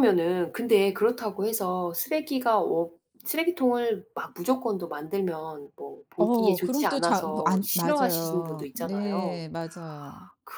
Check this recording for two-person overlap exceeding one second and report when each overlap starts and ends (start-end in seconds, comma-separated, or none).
6.2-9.4